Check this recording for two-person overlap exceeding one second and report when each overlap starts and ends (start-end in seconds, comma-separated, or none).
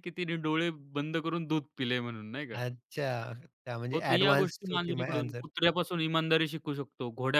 3.9-5.4